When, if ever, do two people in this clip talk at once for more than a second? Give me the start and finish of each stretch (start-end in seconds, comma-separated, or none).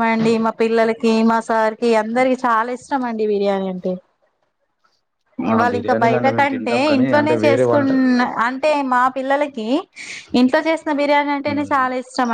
5.5-7.9